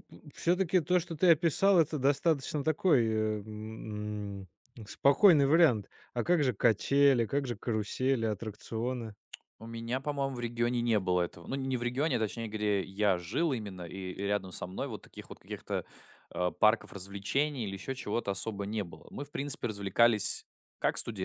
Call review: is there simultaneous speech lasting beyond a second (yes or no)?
no